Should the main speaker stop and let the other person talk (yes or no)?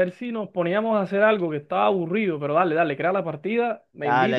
yes